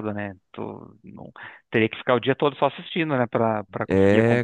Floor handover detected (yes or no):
yes